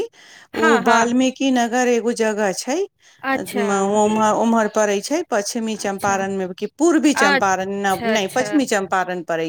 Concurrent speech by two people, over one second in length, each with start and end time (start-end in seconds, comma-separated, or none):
7.2-8.5